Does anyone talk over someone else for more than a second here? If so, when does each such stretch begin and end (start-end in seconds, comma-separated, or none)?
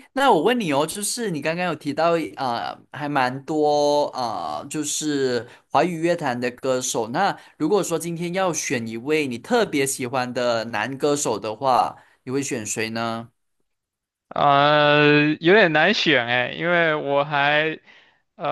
none